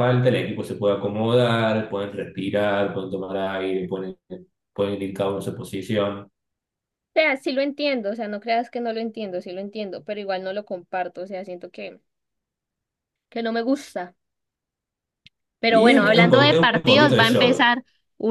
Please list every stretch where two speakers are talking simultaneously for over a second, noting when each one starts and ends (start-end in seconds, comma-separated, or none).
15.7-17.7